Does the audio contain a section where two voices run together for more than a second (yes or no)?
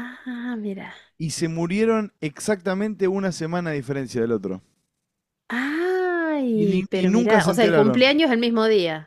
yes